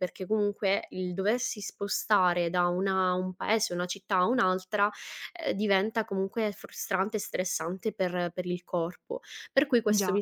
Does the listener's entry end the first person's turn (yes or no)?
no